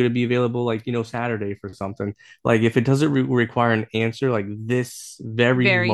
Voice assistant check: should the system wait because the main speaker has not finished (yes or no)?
yes